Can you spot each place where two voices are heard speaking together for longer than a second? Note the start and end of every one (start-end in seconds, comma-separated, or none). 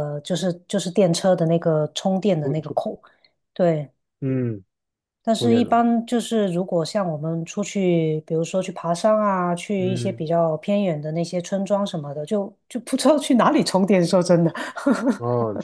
none